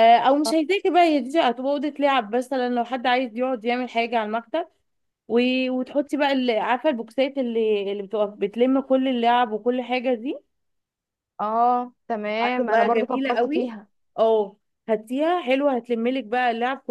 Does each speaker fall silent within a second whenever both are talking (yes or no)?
no